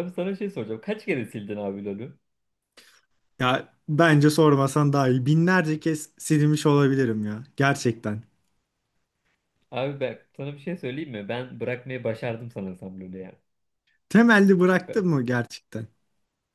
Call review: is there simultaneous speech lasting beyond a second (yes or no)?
no